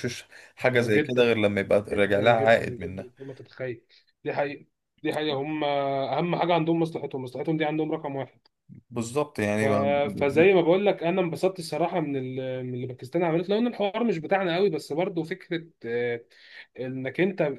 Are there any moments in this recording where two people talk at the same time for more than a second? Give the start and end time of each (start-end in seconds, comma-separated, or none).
1.9-3.1